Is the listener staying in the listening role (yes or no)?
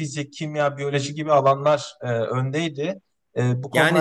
no